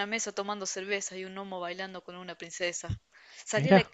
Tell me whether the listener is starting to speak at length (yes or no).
no